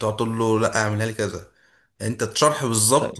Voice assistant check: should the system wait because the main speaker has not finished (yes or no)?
yes